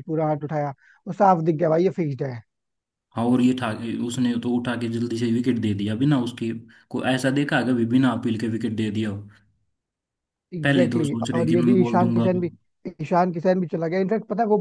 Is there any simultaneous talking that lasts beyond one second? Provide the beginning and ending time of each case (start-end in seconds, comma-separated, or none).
10.6-12.3